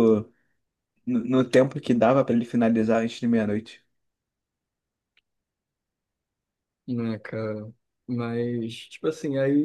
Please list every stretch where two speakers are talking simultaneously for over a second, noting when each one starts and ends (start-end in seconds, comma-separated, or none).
none